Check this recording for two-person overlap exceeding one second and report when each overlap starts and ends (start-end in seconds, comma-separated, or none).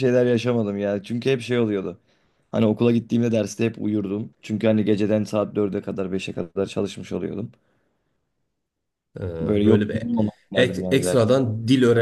none